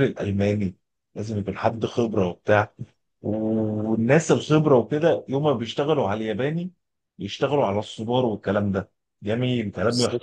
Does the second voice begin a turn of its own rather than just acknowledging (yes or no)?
no